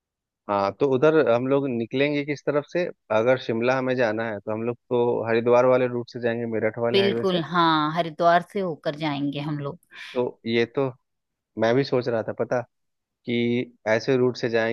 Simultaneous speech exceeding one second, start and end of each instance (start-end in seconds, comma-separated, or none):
none